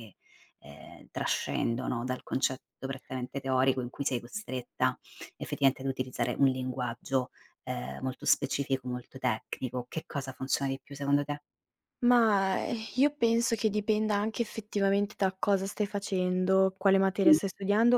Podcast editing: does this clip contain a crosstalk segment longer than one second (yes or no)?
no